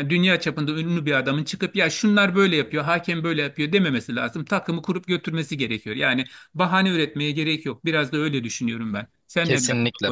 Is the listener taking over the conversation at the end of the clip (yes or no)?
yes